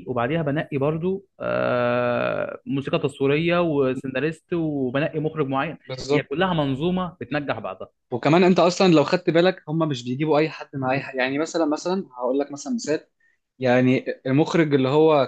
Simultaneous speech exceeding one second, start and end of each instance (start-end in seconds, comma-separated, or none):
none